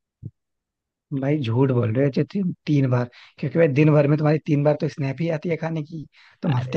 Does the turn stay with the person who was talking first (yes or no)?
yes